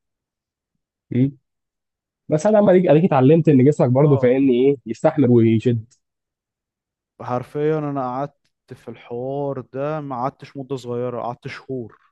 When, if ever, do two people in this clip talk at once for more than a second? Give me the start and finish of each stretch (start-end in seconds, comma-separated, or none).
none